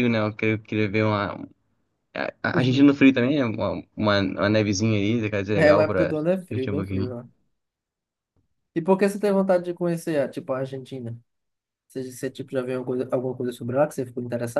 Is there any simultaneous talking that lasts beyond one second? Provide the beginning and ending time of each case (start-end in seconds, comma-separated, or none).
5.6-7.2